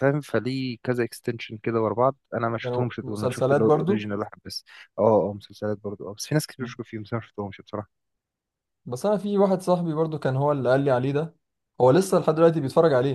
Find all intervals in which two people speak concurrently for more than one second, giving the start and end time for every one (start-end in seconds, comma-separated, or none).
2.6-4.1